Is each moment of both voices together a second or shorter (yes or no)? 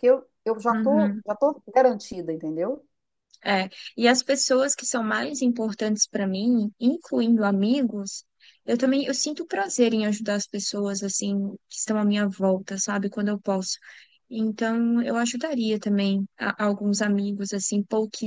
yes